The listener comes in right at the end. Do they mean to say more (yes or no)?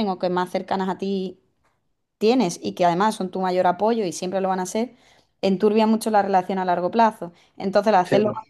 no